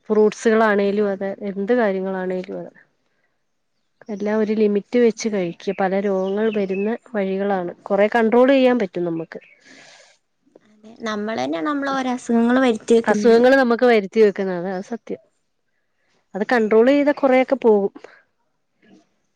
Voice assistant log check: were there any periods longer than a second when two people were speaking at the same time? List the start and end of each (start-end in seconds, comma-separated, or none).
none